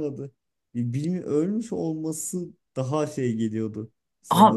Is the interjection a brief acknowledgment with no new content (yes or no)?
no